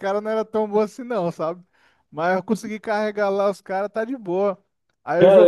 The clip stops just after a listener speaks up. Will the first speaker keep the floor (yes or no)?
no